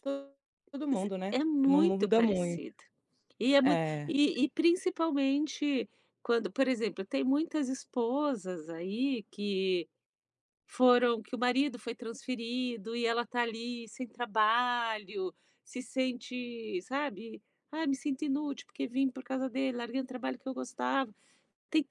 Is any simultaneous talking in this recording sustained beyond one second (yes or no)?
yes